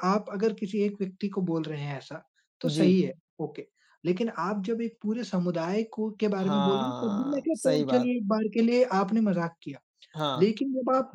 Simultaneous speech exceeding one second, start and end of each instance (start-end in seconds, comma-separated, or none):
6.4-8.1